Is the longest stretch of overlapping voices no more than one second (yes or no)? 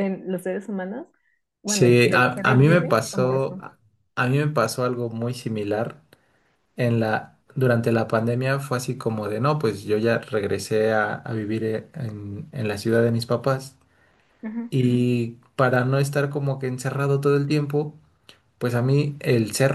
no